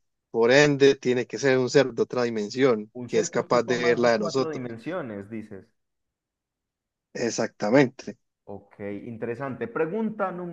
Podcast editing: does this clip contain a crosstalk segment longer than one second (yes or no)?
yes